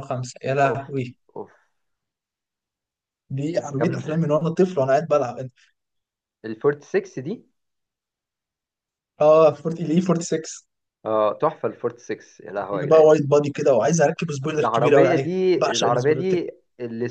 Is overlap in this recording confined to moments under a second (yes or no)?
no